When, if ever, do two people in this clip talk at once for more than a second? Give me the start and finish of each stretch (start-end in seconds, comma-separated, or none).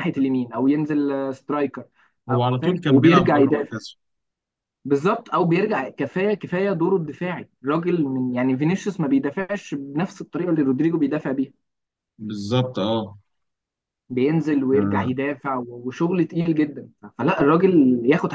2.3-3.8